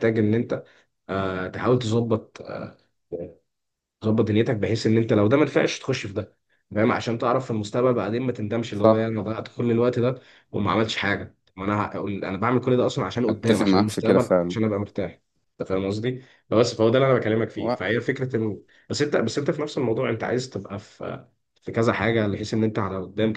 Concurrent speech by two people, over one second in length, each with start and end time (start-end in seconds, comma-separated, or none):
13.3-14.6